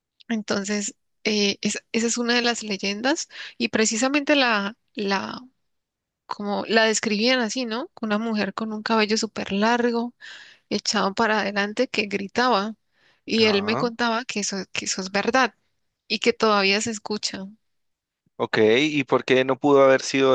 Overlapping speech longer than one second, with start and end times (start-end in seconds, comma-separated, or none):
none